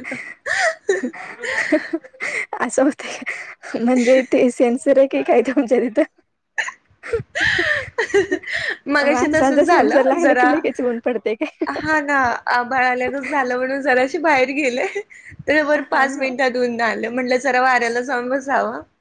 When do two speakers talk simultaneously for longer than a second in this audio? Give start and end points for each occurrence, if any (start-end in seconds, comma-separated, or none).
9.1-10.5